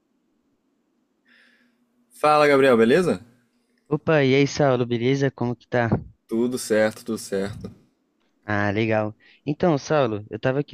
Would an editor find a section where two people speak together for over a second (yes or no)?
no